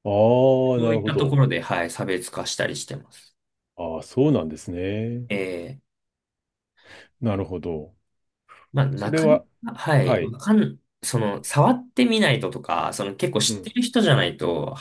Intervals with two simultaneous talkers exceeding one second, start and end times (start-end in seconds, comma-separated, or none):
none